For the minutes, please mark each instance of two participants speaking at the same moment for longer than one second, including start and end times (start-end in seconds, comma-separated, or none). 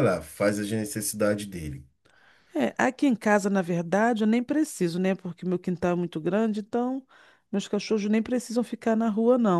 none